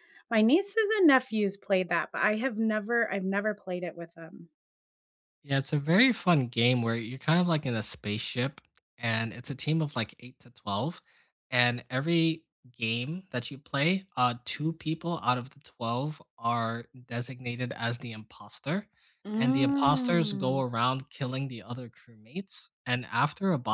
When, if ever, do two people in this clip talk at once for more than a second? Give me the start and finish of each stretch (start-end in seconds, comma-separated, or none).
19.4-20.6